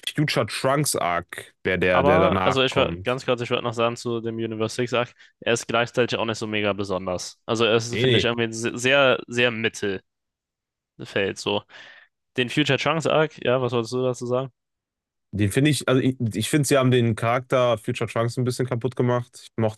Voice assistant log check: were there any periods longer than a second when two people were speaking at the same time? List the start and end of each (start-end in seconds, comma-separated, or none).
1.9-3.2